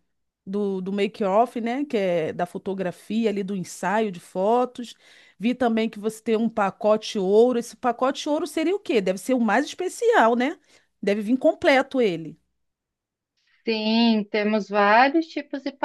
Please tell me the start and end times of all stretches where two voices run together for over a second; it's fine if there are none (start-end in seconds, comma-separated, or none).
none